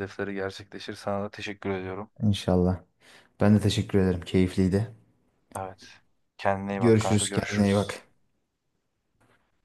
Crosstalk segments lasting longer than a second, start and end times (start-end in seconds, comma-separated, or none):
6.8-8.0